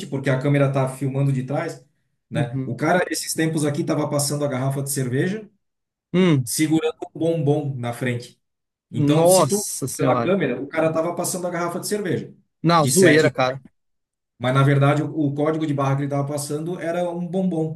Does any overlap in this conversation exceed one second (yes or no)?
yes